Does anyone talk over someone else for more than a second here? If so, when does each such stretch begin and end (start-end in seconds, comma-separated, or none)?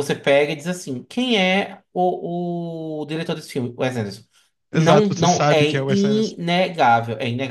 4.7-6.3